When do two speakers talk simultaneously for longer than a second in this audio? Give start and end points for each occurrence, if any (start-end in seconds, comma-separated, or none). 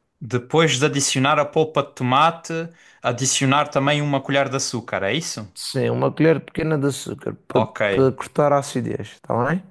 none